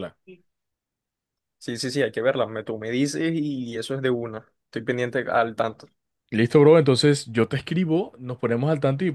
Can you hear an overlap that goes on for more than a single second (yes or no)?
no